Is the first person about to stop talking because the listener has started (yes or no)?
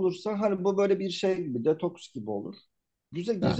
no